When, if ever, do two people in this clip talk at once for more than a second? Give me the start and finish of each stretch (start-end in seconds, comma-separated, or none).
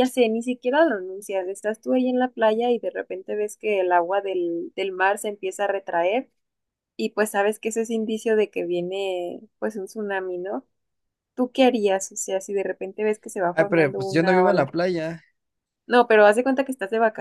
13.5-14.7